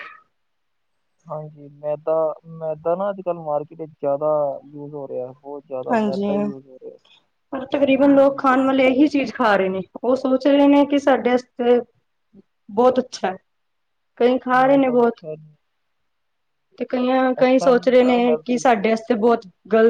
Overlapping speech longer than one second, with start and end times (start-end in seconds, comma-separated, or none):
17.4-19.4